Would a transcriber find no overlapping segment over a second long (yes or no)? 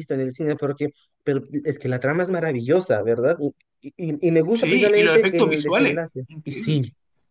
no